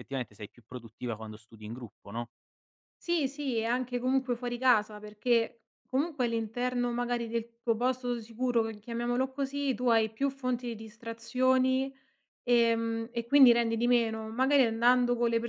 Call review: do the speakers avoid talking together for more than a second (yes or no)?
yes